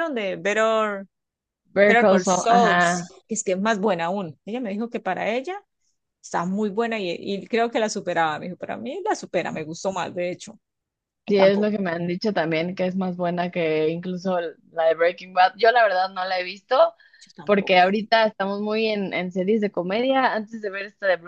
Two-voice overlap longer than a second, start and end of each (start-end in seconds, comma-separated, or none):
1.8-3.1